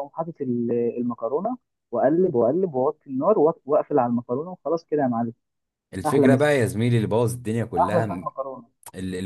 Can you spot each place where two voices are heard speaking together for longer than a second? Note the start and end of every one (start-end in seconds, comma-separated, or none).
none